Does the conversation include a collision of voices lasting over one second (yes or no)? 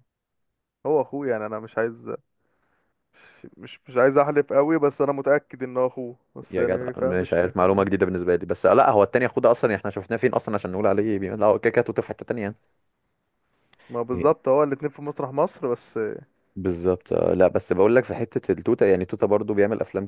yes